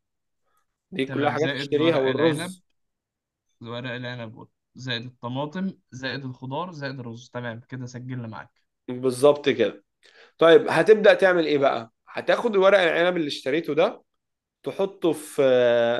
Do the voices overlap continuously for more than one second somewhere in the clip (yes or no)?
yes